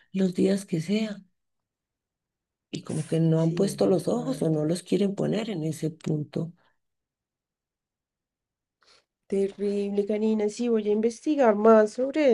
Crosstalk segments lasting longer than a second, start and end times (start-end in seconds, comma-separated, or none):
3.3-4.7